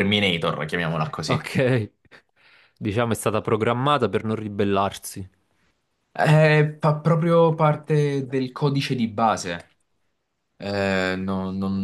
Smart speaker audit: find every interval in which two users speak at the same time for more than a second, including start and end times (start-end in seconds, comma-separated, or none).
none